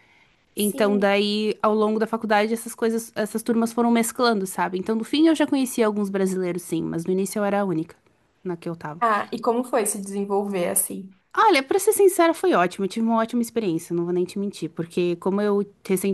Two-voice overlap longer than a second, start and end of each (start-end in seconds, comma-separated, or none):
none